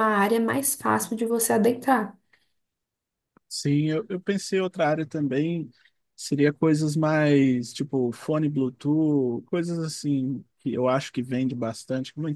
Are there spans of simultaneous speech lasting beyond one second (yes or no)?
no